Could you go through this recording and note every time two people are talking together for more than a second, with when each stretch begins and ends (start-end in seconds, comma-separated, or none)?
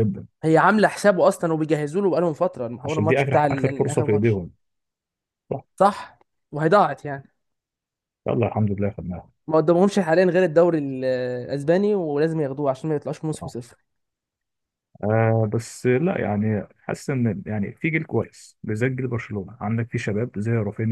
2.9-4.4